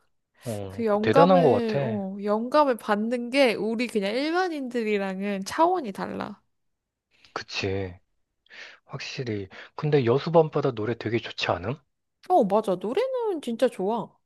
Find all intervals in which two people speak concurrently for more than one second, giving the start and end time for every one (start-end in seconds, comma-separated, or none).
0.7-2.0